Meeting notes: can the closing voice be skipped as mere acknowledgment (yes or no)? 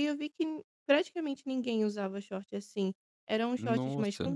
yes